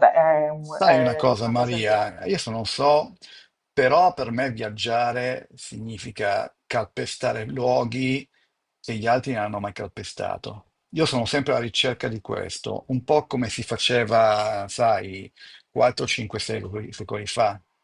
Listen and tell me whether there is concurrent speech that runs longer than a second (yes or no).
yes